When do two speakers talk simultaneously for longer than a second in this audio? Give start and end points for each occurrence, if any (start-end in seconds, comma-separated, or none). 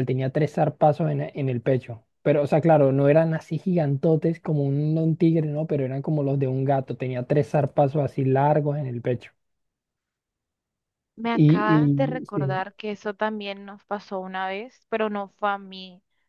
11.3-12.6